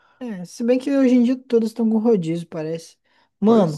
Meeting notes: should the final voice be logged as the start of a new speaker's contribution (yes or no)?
no